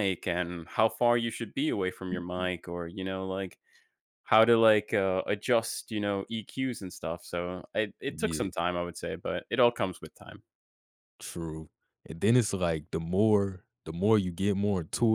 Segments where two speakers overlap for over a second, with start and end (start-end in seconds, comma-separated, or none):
none